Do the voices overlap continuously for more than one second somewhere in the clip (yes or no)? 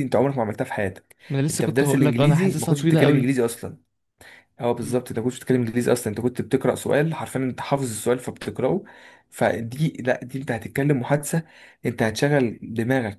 yes